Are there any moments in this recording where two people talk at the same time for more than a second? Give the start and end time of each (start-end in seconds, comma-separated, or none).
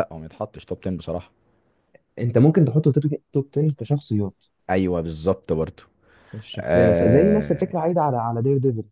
6.6-7.8